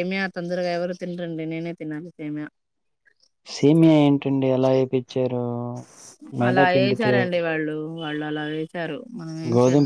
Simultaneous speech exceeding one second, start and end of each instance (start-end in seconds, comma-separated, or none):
none